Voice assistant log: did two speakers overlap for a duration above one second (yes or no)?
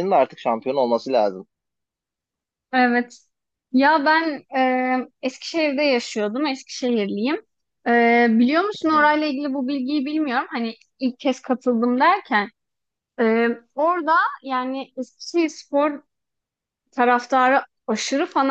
no